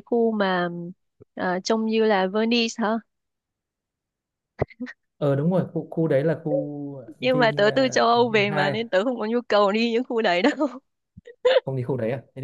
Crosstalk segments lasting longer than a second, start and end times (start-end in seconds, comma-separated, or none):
7.2-8.8